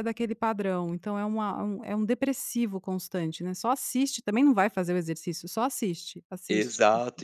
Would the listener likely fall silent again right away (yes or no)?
no